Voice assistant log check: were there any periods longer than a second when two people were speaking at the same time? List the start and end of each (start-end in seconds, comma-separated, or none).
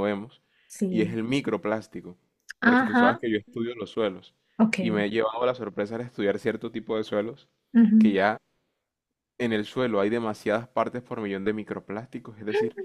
none